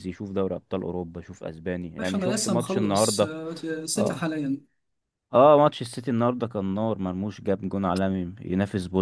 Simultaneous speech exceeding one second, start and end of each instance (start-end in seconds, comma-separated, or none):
2.0-3.3